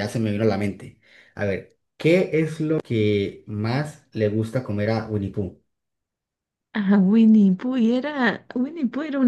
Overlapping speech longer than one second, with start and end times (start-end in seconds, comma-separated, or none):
none